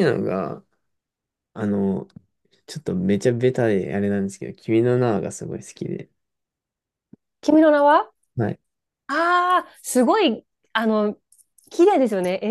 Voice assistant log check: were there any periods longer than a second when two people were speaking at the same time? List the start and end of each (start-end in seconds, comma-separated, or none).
none